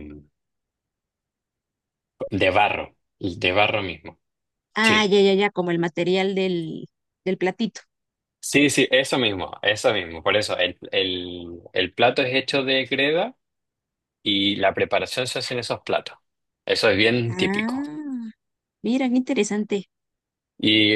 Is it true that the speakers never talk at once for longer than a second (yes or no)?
yes